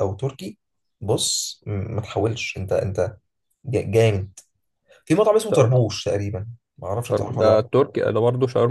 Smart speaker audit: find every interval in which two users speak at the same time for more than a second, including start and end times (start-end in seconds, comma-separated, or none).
none